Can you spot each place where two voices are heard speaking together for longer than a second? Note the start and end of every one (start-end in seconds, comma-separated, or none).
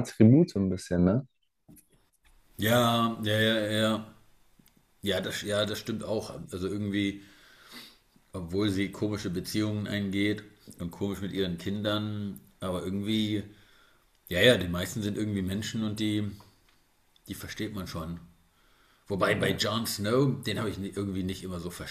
none